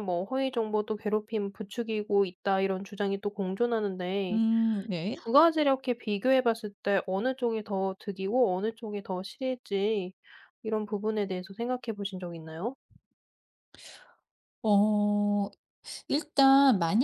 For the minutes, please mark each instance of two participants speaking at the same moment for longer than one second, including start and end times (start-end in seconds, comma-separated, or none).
none